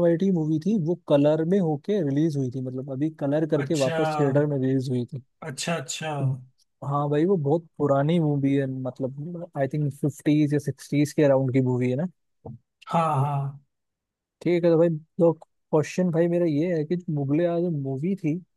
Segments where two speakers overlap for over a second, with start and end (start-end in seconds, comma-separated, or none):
none